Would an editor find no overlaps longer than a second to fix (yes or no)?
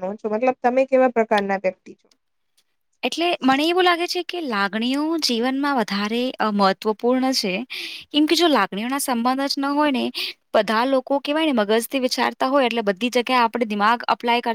yes